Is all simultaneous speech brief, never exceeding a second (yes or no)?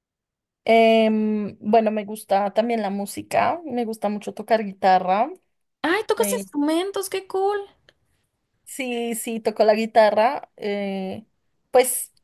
yes